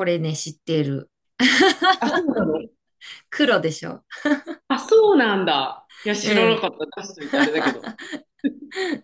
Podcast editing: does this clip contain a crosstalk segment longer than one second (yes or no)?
no